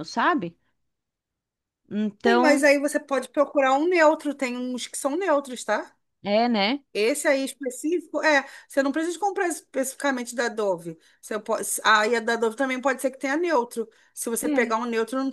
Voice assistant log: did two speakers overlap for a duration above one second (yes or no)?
no